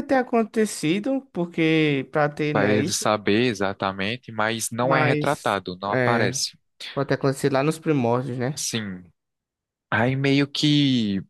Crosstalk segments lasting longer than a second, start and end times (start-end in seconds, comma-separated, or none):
4.8-6.4